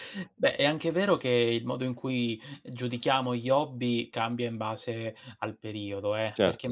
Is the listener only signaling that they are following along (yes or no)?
yes